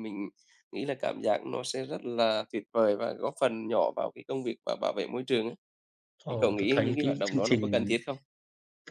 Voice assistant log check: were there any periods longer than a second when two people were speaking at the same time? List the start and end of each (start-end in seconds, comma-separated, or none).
6.3-7.8